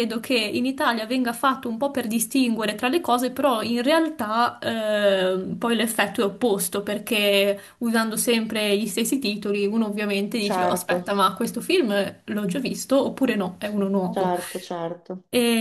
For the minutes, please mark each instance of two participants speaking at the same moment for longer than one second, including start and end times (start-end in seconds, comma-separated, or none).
none